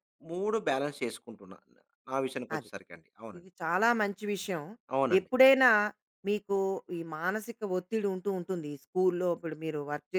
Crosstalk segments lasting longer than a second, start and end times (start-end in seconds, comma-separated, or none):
none